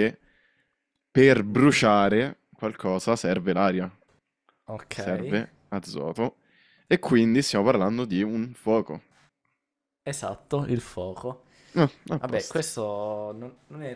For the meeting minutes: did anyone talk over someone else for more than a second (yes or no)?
no